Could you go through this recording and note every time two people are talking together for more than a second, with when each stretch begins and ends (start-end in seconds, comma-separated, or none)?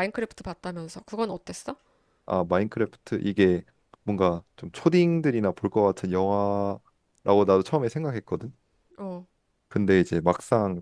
none